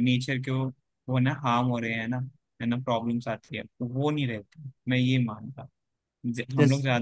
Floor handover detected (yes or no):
no